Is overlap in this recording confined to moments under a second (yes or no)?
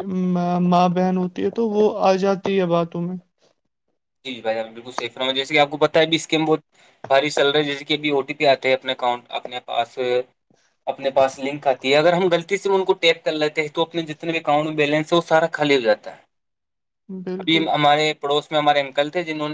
yes